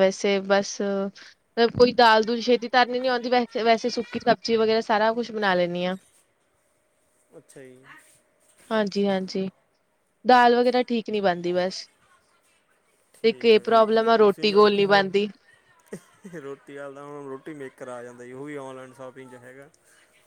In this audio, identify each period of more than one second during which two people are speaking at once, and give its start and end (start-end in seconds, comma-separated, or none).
13.2-14.6